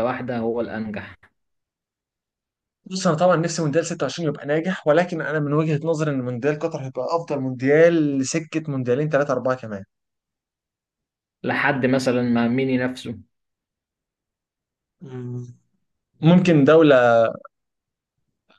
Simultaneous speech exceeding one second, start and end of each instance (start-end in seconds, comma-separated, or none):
none